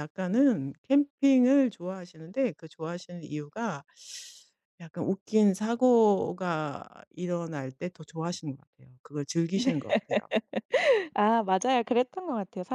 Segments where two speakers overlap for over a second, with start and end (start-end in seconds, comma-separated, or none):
none